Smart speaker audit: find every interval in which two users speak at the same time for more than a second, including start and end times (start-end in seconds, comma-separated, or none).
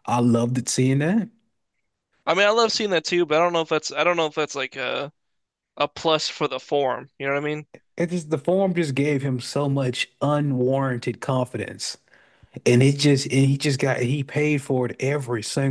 none